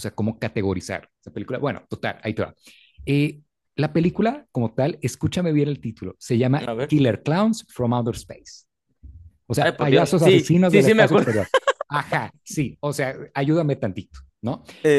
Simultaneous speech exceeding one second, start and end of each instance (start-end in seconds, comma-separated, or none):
9.6-11.3